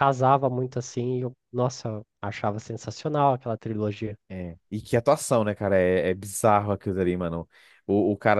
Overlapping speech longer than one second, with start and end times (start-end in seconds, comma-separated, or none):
none